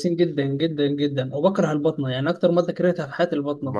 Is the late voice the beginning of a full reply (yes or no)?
yes